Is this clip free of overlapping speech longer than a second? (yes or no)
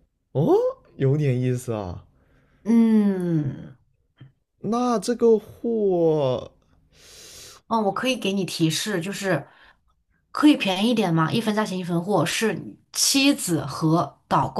yes